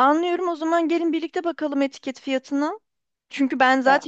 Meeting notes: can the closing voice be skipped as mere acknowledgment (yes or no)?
yes